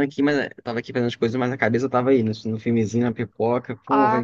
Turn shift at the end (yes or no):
no